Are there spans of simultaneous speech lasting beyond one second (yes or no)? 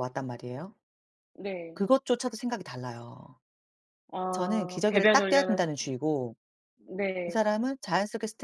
yes